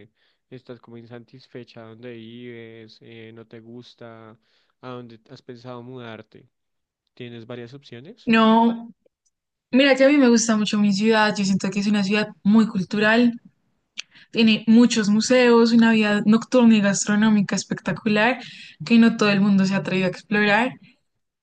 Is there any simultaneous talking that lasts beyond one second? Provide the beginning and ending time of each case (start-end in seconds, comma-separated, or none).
none